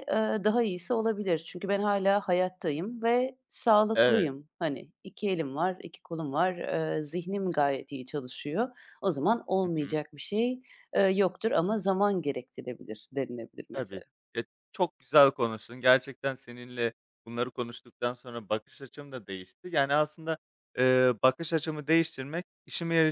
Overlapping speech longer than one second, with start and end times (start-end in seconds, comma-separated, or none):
none